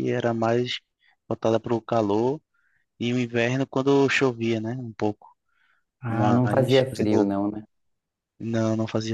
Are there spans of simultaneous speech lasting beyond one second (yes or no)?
yes